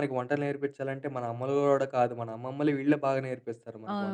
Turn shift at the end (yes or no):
yes